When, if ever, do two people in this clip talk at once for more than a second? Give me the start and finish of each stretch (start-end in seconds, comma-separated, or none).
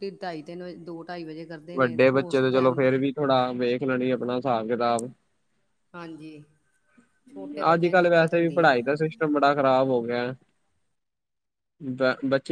7.7-8.9